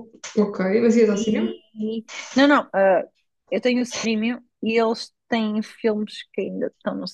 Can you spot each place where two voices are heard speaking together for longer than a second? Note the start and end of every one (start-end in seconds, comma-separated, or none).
none